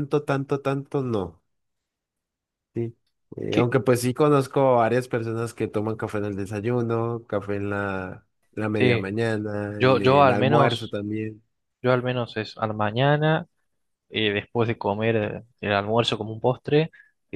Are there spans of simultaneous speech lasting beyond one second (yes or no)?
yes